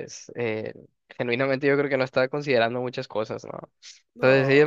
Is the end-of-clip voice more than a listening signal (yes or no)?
no